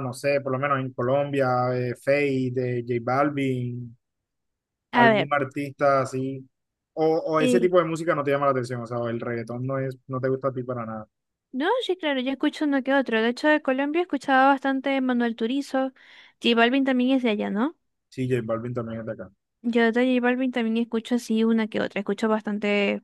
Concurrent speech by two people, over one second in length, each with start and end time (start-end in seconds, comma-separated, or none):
none